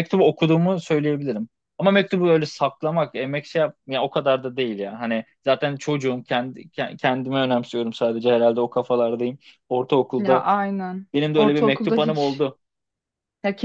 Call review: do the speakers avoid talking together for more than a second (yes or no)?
no